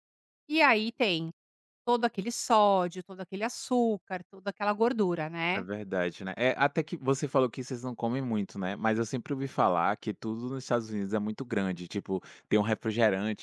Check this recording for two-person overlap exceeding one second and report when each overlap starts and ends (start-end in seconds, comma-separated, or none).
none